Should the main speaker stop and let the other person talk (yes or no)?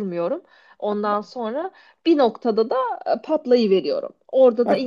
no